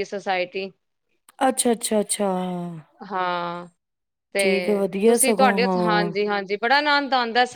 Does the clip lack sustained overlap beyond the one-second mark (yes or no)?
no